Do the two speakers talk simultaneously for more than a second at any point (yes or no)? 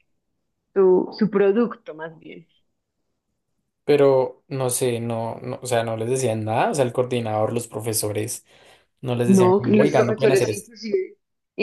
yes